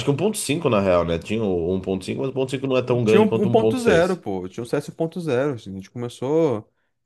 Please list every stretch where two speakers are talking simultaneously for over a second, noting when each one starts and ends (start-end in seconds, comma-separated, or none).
3.0-4.2